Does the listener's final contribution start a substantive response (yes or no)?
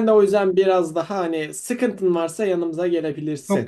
yes